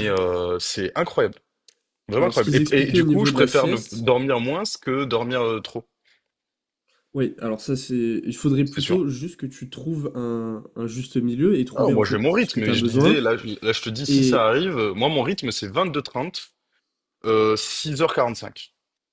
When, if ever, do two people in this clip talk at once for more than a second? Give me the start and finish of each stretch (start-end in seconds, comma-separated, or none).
2.2-4.1, 11.7-13.2